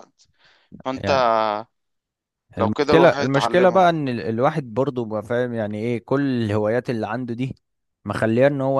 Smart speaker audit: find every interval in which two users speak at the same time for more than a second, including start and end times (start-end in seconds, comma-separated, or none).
2.6-4.0